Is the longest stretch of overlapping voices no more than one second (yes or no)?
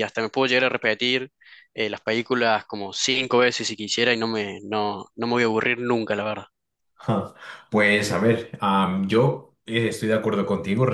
yes